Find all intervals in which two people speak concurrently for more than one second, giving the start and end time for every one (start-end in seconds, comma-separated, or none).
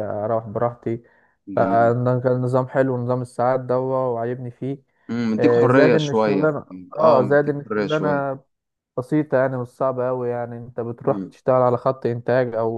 5.3-8.3